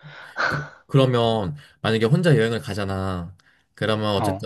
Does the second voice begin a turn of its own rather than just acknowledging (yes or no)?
no